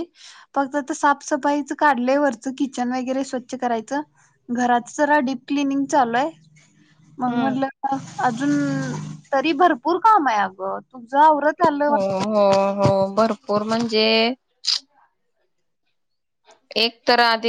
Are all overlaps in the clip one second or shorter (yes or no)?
yes